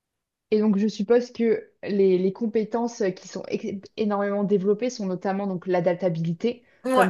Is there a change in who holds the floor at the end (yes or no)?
no